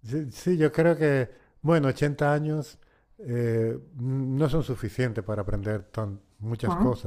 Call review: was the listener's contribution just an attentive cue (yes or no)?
yes